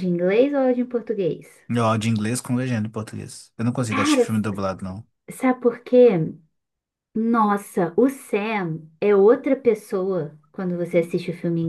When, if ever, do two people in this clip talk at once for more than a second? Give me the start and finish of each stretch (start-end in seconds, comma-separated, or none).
none